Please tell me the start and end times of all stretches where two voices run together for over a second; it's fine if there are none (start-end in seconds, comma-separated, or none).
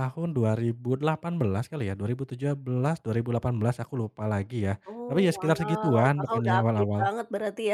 4.9-7.0